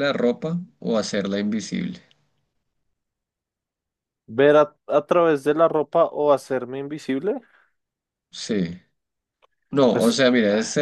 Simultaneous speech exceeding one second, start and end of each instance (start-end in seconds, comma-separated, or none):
none